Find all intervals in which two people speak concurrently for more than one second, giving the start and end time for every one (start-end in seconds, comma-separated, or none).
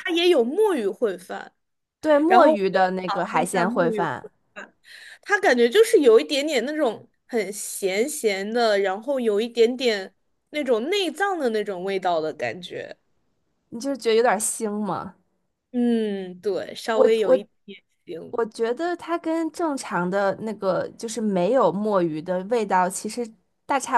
2.3-4.1